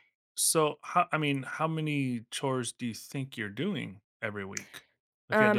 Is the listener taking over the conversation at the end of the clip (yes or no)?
yes